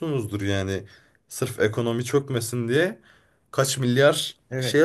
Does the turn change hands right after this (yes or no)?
yes